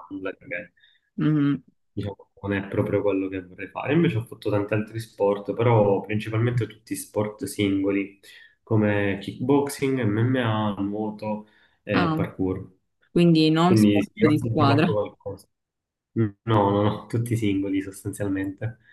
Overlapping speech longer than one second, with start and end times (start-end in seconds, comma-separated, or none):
13.7-15.0